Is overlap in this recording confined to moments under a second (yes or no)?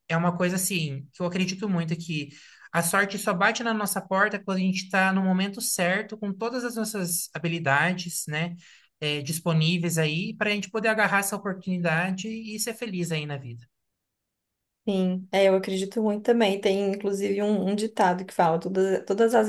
yes